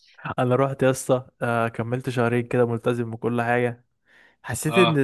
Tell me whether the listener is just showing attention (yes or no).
yes